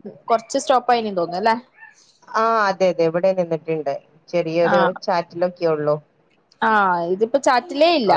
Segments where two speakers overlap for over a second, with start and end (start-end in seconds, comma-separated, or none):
none